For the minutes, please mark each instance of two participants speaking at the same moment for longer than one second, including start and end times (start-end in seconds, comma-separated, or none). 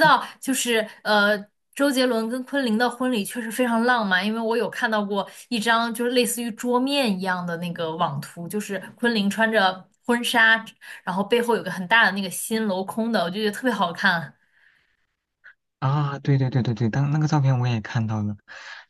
none